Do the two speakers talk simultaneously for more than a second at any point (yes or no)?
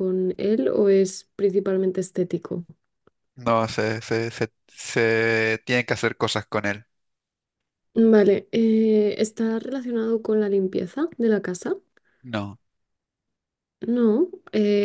no